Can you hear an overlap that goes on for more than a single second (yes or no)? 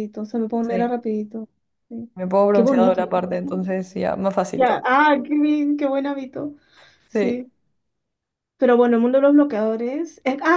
no